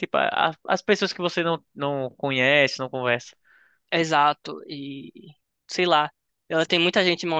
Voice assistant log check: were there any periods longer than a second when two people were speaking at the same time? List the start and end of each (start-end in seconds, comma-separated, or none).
none